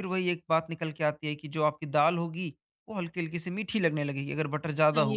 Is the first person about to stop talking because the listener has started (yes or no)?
yes